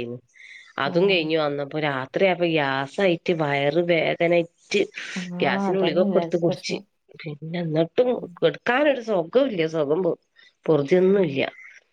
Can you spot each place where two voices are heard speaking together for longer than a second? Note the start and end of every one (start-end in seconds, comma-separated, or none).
5.4-6.8